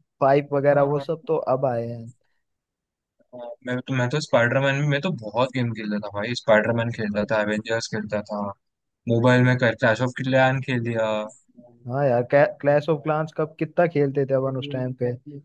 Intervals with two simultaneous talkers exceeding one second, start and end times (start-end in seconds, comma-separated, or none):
none